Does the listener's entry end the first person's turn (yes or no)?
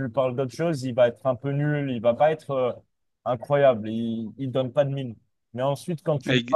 no